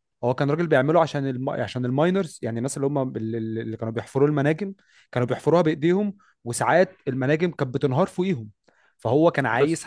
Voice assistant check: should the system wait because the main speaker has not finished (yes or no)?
yes